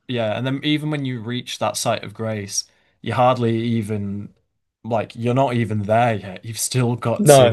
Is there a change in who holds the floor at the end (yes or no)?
no